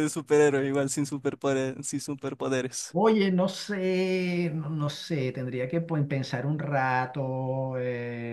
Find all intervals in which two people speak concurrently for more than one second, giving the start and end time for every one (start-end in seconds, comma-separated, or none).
none